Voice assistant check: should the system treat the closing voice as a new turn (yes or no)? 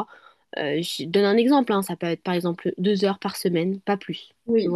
yes